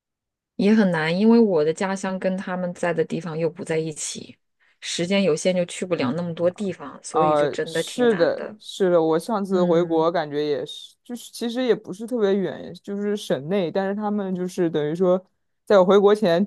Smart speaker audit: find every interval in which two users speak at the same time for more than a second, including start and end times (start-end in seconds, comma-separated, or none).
7.1-8.6